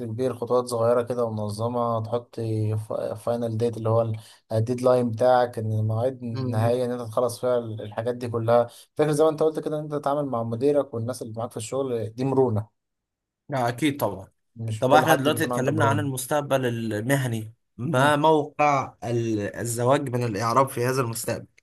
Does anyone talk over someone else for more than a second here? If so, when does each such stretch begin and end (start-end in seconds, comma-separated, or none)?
14.8-16.1